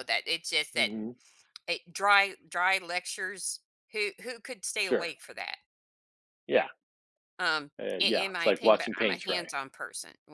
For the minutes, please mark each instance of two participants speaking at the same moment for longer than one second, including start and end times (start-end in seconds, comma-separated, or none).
7.8-9.5